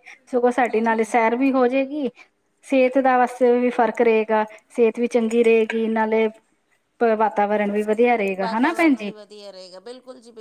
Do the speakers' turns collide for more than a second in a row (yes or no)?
no